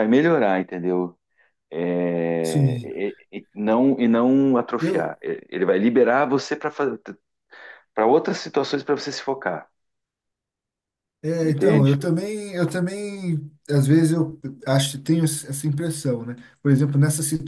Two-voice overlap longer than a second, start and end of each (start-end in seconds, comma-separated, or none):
none